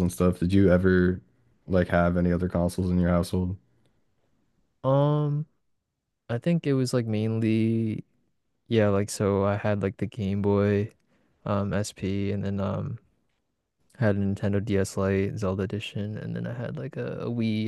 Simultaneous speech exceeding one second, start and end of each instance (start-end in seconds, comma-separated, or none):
none